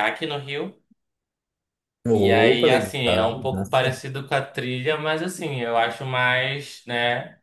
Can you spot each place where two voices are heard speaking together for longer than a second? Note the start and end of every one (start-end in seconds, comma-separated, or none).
2.1-4.0